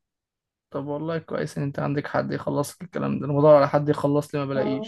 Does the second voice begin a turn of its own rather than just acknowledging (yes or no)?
no